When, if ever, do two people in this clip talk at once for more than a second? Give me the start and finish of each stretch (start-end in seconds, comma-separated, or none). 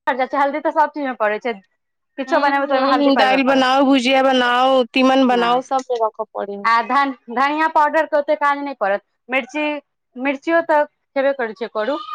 2.3-3.6